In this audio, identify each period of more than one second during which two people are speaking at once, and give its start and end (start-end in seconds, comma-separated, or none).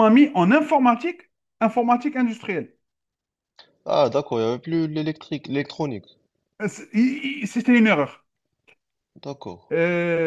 none